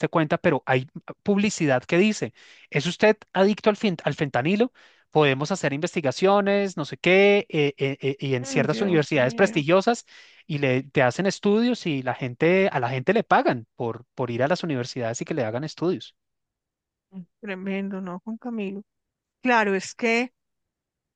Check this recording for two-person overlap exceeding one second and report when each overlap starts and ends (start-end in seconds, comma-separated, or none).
8.4-9.6